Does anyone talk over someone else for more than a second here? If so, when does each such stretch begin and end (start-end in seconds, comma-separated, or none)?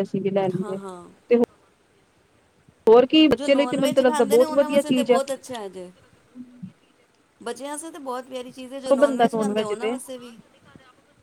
3.4-5.2